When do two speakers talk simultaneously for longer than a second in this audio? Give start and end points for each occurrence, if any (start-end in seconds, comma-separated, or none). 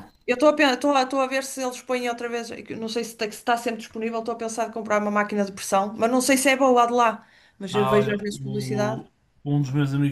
7.7-9.0